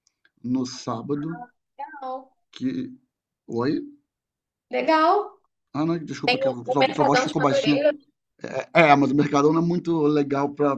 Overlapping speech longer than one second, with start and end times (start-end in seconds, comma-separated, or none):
6.5-7.8